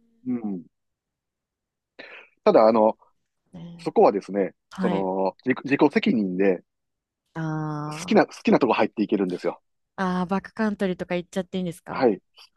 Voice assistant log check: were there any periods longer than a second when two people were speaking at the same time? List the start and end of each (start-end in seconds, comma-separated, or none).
none